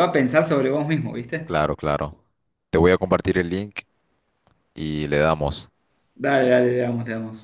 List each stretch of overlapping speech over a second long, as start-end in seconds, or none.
none